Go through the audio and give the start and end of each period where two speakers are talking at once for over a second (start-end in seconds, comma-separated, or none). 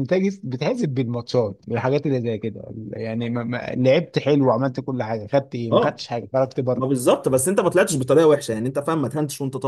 none